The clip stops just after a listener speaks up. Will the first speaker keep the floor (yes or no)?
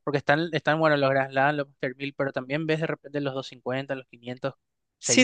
no